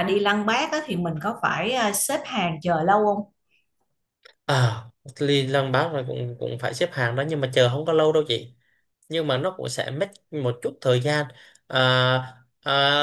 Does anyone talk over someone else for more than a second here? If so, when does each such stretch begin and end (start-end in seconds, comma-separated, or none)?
none